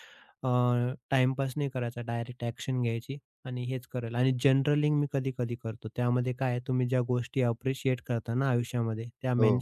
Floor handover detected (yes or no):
no